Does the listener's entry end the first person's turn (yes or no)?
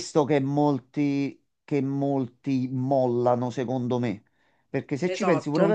no